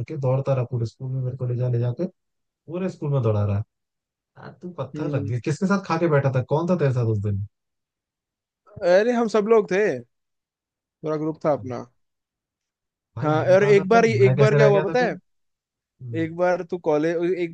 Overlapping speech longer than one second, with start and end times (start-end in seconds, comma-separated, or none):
13.2-15.1